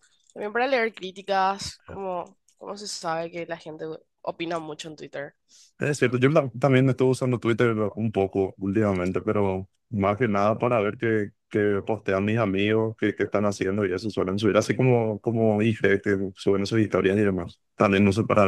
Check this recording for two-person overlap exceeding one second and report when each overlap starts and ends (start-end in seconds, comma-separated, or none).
none